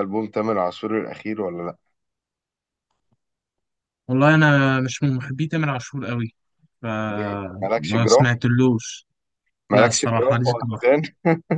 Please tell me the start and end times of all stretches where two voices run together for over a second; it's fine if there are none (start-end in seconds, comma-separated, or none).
7.1-8.3, 9.7-11.0